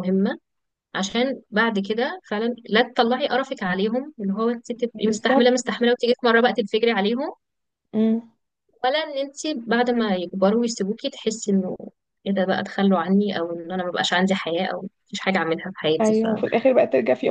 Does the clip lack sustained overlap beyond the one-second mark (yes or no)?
yes